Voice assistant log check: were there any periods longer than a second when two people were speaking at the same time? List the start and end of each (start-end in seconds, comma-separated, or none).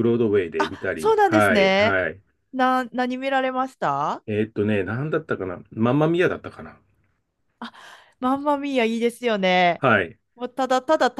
0.6-2.0